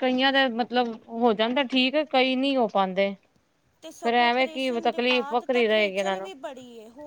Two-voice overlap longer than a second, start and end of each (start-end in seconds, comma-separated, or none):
4.0-6.3